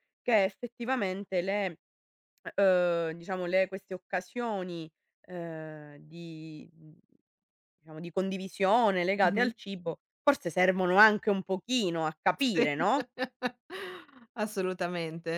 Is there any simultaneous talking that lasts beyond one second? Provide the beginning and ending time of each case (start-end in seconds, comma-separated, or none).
none